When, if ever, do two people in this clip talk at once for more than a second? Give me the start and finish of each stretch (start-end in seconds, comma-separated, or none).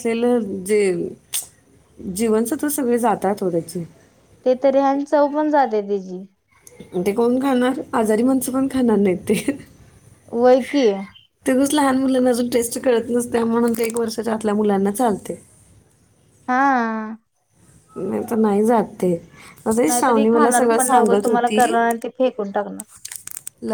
19.9-21.6